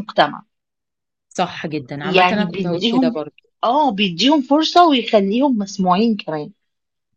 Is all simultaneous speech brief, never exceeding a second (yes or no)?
no